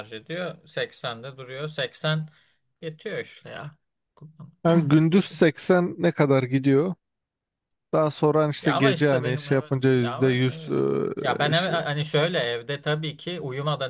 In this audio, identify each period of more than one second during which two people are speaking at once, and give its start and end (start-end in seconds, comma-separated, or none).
8.6-11.8